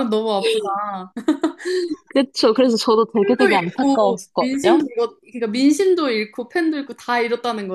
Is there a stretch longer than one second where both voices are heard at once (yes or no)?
yes